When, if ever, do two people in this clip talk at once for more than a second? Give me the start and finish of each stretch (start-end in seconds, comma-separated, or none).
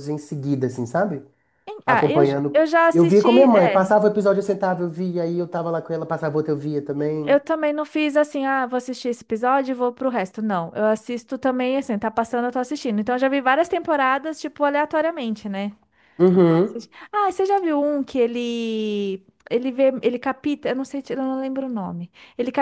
1.9-3.9